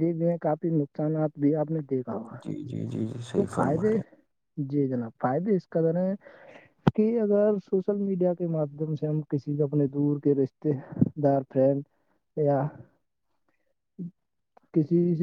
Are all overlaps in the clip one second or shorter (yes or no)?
yes